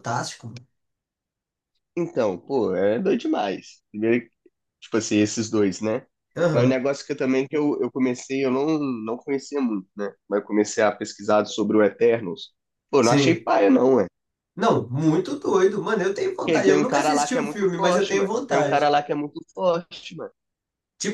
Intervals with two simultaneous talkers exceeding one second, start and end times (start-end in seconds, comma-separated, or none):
16.4-18.9